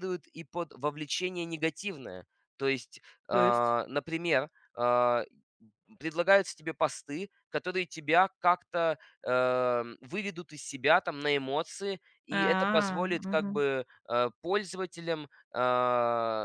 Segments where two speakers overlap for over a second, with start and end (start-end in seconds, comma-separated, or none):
12.3-13.6